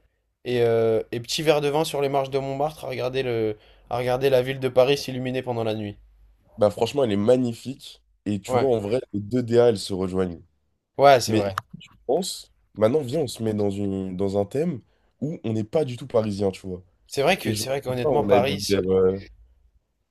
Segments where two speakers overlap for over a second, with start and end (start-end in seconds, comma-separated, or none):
17.4-18.8